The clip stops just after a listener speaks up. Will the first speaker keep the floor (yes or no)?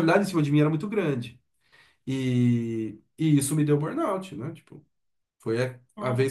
yes